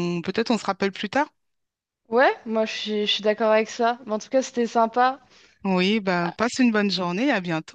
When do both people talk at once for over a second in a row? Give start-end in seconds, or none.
none